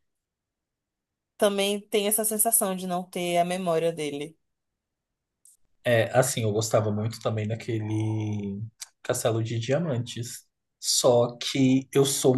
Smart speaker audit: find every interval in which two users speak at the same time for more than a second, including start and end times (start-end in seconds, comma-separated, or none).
none